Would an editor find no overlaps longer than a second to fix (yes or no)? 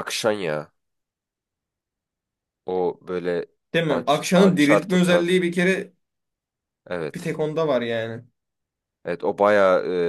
no